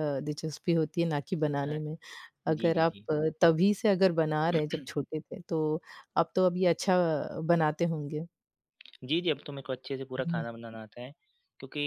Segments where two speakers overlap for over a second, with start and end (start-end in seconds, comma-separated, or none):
none